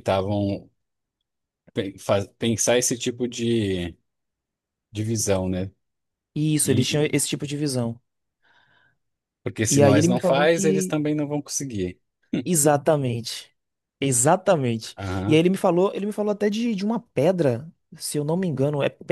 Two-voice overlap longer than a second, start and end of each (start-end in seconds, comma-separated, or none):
9.7-11.0